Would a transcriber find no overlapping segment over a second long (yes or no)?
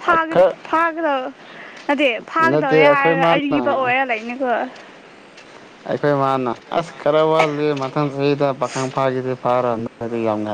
no